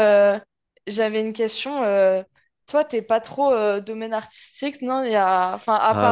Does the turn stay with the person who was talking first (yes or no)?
no